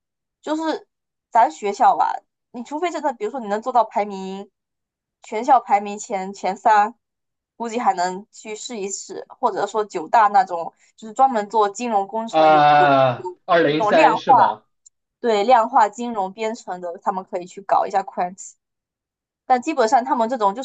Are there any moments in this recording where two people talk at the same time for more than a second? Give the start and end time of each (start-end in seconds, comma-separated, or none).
12.3-14.3